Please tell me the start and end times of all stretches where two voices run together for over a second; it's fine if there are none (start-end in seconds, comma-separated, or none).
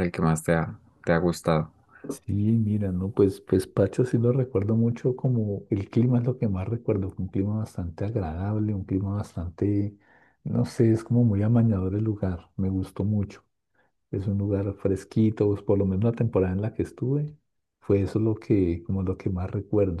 none